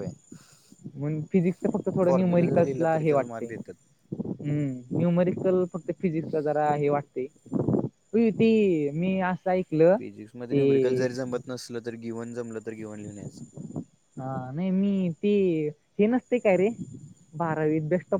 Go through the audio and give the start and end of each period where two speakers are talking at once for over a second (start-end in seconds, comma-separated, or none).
2.1-3.7